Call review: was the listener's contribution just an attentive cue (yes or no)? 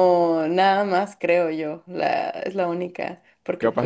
no